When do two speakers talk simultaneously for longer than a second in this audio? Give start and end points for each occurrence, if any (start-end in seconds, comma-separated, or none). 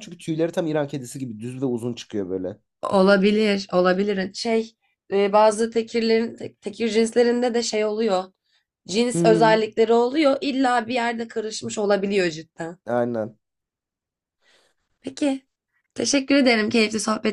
none